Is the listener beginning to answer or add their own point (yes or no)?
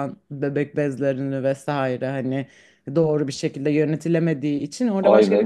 yes